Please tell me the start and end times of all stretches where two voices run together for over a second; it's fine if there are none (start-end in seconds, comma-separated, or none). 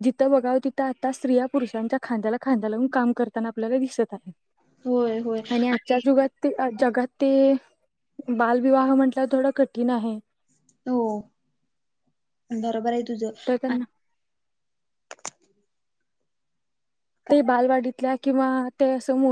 none